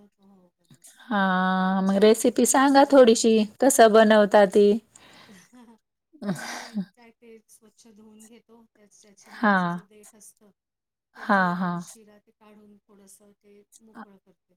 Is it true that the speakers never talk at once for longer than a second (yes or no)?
no